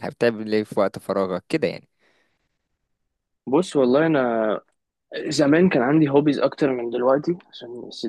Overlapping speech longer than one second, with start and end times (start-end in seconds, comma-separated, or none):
none